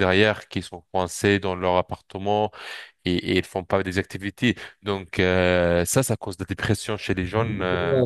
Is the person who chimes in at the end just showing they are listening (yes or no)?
no